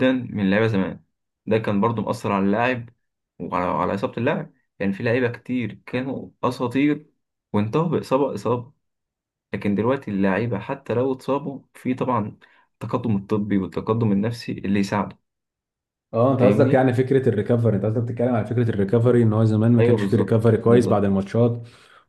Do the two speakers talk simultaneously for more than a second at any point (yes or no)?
yes